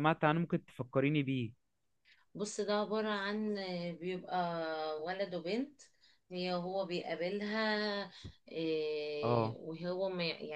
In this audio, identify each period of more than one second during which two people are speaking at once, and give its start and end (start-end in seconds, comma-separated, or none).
none